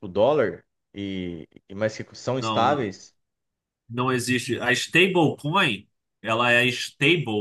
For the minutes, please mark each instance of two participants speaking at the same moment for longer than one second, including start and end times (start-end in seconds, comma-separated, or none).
none